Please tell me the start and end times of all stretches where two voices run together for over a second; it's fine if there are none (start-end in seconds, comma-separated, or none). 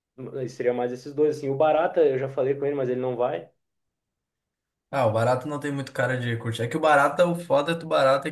none